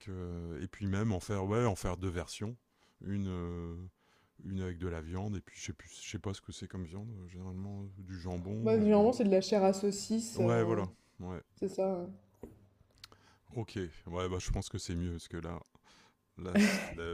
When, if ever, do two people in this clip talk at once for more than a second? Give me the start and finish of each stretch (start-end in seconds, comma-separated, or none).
none